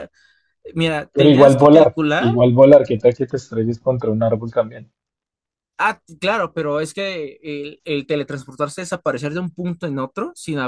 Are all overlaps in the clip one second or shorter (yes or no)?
no